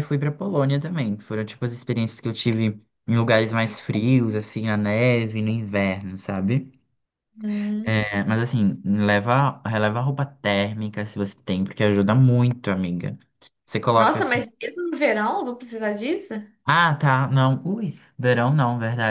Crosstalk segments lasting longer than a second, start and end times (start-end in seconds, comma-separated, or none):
none